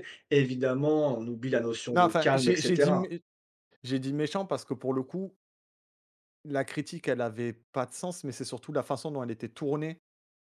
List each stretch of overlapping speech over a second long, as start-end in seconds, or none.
1.9-3.1